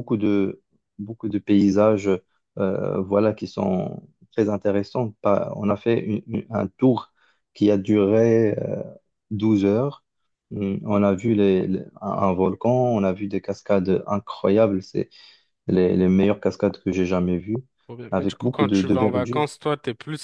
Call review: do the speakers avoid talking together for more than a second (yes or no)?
no